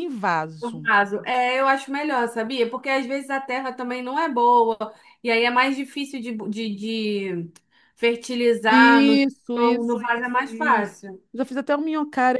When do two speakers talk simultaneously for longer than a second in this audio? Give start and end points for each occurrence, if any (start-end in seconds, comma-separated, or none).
8.7-10.9